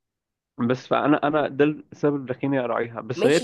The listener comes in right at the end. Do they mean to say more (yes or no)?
yes